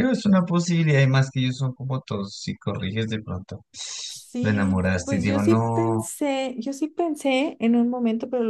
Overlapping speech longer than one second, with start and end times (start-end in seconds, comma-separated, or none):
4.4-6.1